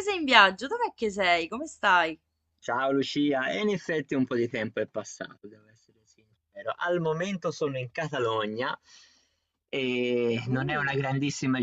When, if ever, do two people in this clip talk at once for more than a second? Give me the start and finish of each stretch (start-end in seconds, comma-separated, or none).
none